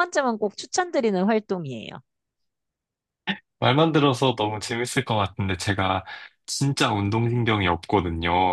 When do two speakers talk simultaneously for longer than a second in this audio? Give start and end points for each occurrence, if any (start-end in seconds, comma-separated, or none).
none